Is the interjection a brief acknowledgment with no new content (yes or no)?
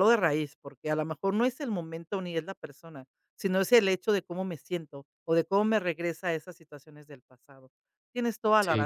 yes